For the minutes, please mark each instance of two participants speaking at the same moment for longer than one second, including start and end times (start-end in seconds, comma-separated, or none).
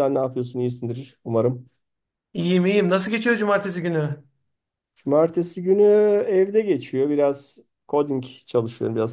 none